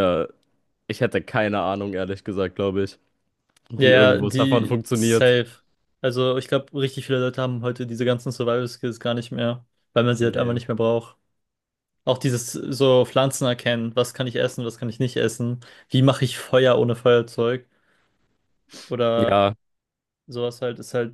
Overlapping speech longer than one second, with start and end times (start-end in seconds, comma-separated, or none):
3.8-5.4